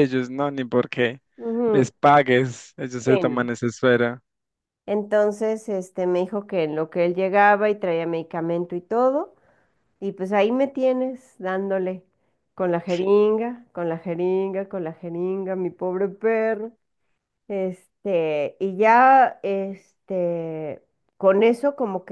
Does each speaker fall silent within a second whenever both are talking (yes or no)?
yes